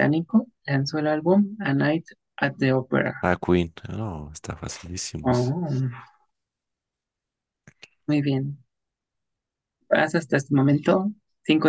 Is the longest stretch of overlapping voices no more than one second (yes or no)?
yes